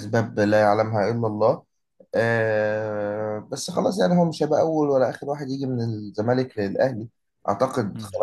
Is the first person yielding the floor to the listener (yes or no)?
no